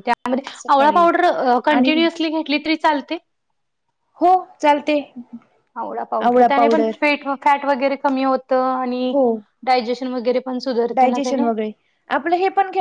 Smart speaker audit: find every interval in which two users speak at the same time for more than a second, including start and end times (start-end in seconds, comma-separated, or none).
none